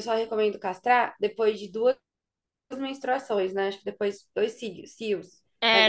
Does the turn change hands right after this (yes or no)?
yes